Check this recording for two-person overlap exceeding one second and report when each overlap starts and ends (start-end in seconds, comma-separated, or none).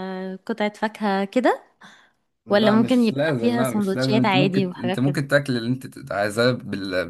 2.5-5.2